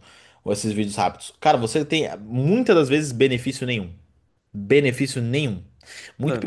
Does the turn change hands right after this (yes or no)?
no